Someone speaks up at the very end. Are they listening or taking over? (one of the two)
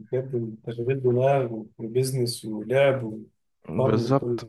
taking over